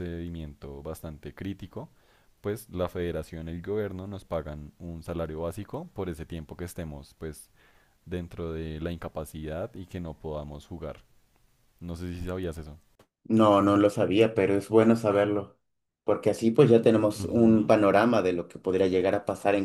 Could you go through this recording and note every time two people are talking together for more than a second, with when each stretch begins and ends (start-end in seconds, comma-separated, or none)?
none